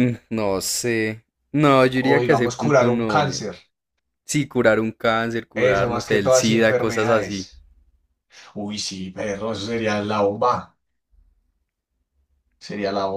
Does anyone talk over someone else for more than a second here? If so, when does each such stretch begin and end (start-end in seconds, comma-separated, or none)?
1.9-3.5, 5.5-7.5